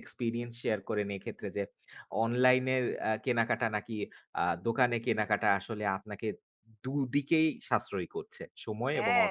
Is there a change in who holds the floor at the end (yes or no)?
yes